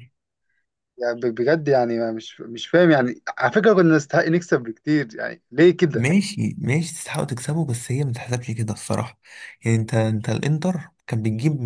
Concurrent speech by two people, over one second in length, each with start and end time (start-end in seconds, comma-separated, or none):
none